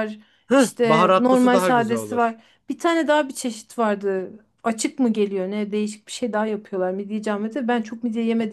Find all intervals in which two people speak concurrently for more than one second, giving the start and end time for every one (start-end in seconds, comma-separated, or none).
0.8-2.4